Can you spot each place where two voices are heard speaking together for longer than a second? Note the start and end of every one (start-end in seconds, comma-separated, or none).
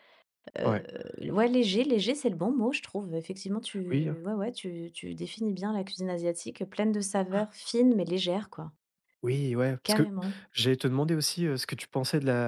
none